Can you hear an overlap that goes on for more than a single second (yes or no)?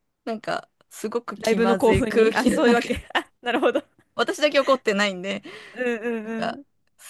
yes